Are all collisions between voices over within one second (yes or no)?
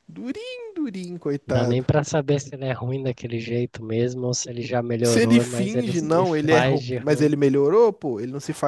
no